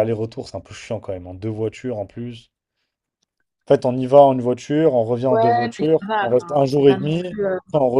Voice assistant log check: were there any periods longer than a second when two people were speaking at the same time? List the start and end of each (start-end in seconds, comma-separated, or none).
5.3-7.2